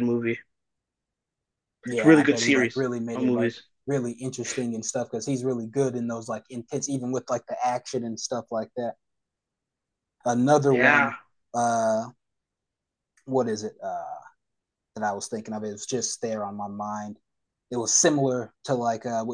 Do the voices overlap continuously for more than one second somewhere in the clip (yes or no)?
yes